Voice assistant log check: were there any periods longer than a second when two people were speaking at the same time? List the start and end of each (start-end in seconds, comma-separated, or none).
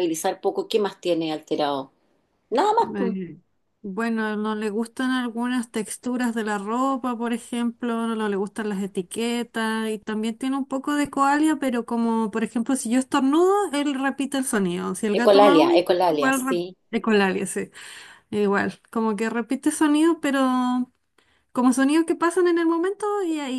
15.1-16.8